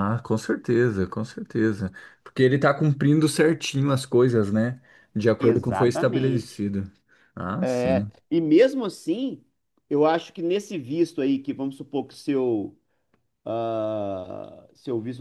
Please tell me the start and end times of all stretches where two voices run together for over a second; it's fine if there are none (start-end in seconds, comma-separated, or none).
5.4-6.7